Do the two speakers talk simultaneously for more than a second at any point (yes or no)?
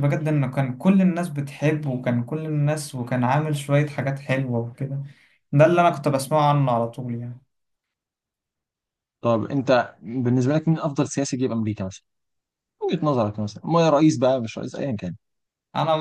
no